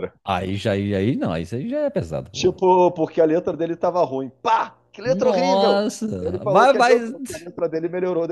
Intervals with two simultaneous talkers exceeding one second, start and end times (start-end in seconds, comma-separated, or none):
5.0-7.0